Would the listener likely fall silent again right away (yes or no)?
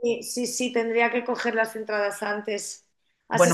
yes